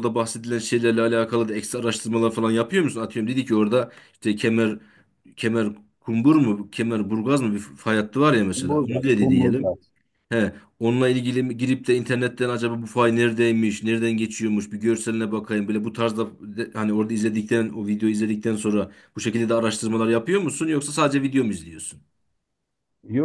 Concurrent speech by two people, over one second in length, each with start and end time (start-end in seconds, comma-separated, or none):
8.5-9.8